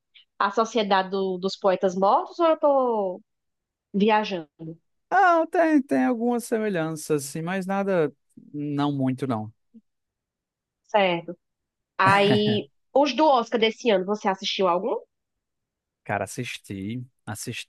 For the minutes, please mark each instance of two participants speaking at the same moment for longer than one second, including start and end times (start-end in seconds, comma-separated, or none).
none